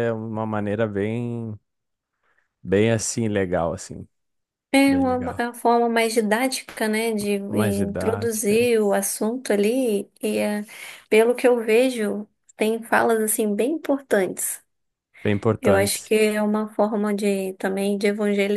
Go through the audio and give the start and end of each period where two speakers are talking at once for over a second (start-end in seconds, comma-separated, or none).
7.5-8.8